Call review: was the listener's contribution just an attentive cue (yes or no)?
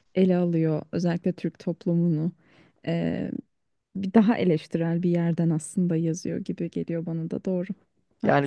no